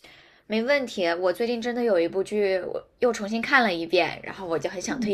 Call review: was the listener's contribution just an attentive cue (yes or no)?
yes